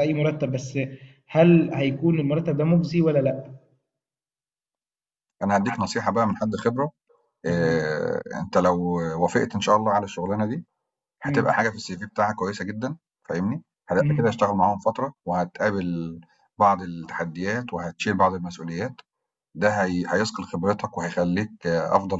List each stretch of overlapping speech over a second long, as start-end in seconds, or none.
none